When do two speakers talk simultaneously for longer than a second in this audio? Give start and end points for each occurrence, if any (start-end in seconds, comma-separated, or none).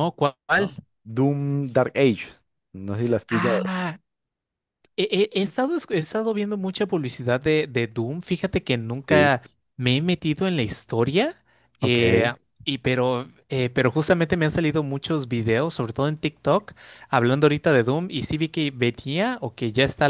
none